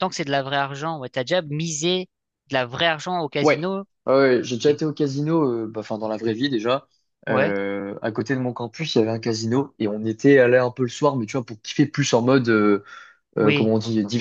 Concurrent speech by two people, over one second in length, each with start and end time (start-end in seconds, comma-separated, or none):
none